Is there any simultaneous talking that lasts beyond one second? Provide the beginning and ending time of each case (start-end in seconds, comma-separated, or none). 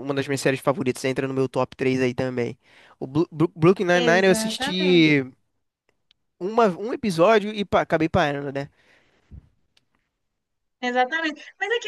3.9-5.2